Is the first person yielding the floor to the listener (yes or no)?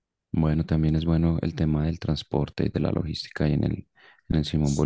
yes